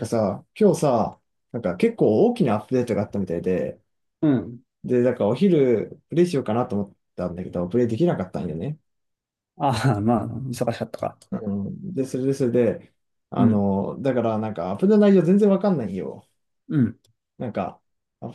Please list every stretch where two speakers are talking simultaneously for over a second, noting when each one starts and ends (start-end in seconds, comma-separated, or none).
none